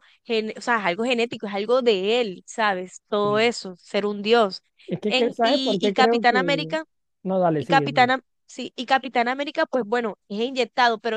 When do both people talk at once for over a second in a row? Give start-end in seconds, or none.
5.1-6.8